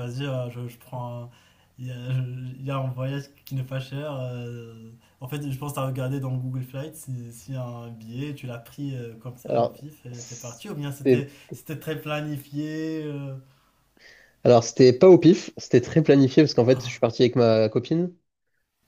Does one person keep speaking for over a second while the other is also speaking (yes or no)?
yes